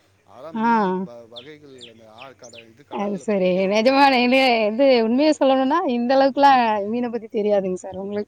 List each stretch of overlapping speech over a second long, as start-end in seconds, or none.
none